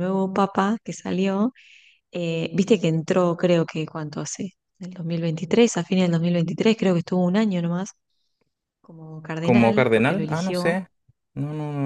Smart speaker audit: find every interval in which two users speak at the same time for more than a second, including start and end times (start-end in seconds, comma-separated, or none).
9.4-10.8